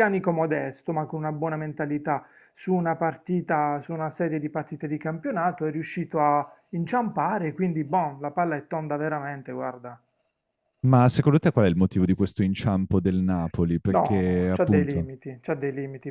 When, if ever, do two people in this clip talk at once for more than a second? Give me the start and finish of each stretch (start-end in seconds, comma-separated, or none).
13.9-15.1